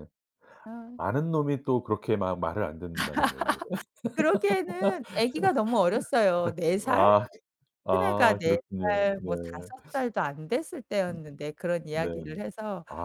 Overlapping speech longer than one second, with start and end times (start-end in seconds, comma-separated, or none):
7.9-9.3